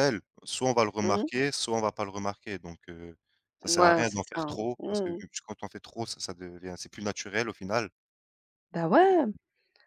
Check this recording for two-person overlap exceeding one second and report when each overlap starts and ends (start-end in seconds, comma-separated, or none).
3.7-5.1